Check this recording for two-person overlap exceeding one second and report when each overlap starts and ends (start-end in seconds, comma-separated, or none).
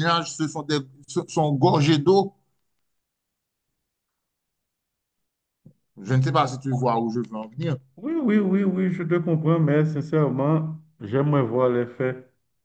none